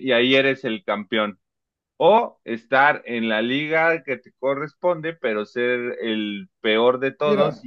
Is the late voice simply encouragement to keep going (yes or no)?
yes